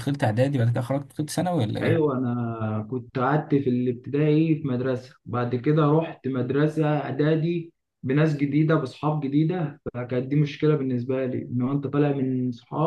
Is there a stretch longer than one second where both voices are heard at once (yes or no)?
no